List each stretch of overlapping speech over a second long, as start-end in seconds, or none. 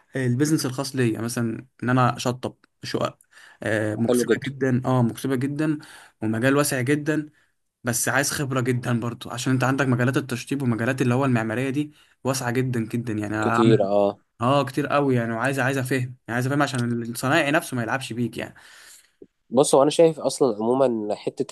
none